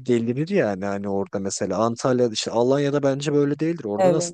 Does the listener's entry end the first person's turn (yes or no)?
yes